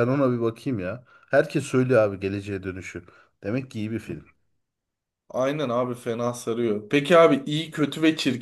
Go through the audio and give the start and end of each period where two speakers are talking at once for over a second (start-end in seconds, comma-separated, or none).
none